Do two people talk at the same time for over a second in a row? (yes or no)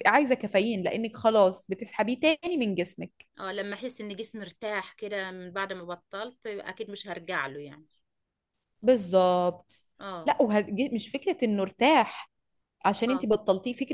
no